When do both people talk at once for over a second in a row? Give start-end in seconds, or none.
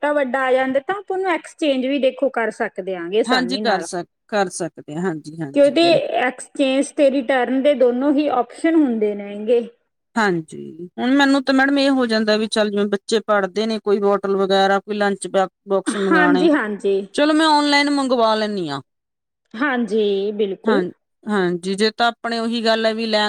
none